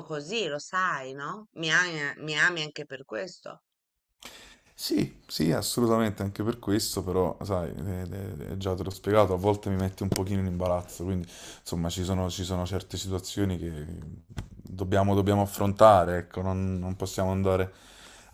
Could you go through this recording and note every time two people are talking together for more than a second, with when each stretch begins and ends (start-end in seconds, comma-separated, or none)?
none